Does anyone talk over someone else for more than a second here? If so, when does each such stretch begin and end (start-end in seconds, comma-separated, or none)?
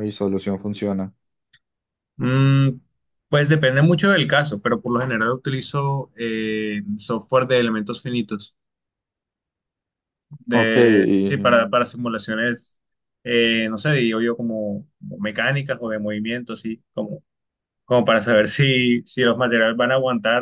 10.5-11.7